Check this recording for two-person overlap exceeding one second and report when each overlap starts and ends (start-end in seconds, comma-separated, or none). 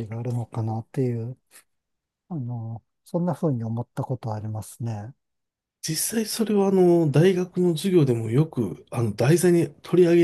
none